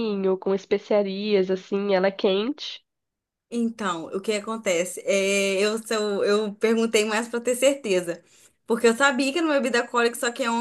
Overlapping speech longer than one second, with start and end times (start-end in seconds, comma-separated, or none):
none